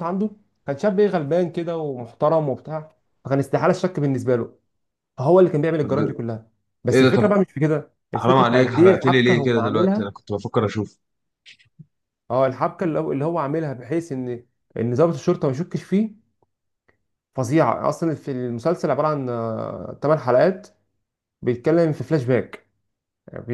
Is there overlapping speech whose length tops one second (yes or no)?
yes